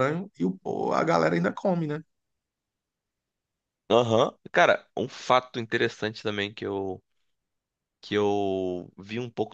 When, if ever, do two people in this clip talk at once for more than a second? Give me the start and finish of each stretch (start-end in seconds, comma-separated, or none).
none